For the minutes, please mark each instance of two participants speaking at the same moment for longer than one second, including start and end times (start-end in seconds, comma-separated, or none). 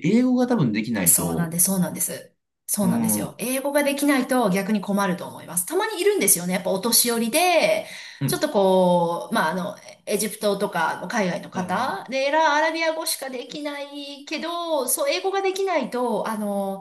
none